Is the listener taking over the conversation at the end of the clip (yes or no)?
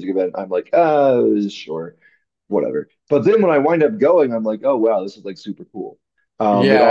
yes